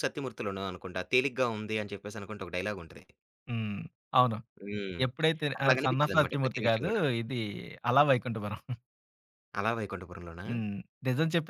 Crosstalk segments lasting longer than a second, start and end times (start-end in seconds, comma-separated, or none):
5.6-7.1